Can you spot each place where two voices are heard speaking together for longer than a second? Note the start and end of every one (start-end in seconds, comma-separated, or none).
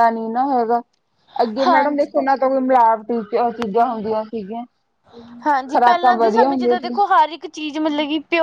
5.7-6.9